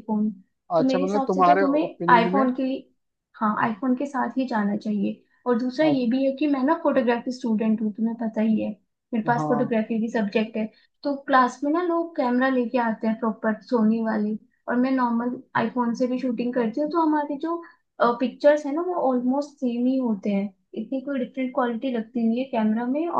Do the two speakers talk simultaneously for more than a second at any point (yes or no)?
yes